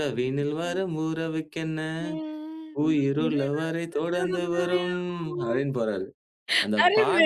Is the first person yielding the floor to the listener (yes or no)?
yes